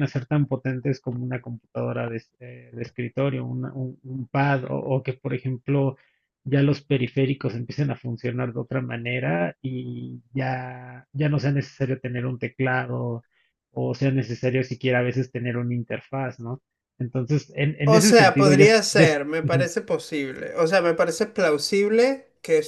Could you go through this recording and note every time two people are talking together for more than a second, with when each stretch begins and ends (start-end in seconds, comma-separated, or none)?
17.8-19.7